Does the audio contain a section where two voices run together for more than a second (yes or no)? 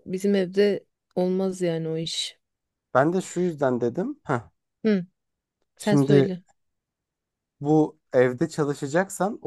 no